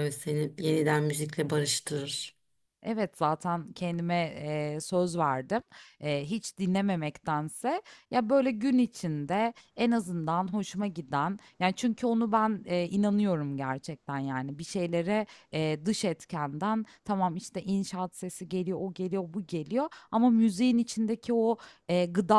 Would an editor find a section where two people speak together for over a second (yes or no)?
no